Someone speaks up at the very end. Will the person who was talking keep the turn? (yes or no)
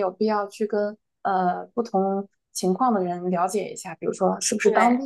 yes